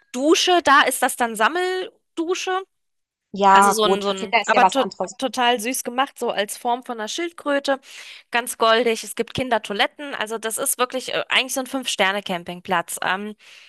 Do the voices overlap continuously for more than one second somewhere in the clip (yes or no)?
yes